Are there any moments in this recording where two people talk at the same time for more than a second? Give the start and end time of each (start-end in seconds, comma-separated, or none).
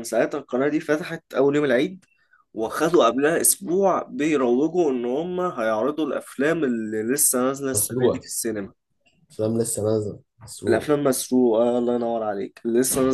none